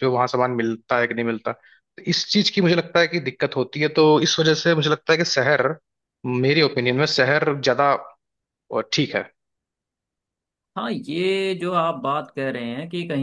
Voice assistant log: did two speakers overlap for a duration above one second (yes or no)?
no